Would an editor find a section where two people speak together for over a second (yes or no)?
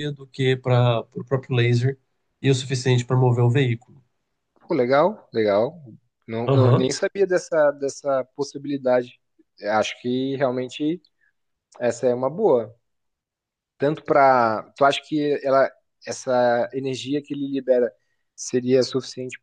no